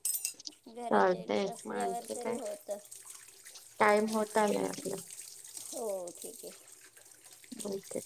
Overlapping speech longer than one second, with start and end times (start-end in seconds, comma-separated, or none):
0.8-2.4